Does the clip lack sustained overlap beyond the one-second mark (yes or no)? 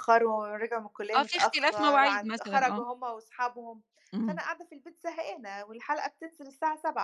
no